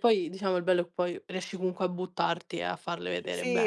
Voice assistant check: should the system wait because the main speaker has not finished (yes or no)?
no